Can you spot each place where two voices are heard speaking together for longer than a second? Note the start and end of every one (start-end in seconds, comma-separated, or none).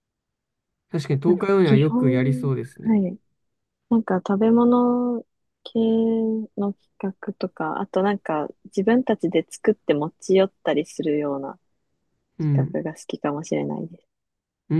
1.2-3.0